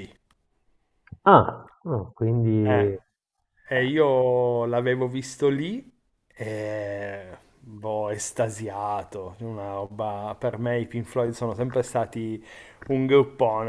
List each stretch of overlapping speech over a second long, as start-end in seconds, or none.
none